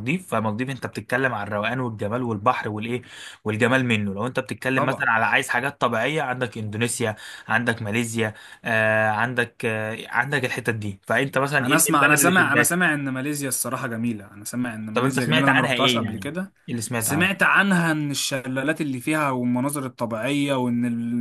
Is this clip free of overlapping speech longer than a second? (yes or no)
no